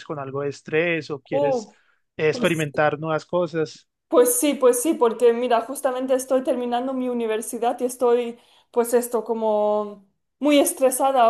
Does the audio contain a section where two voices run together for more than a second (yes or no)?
no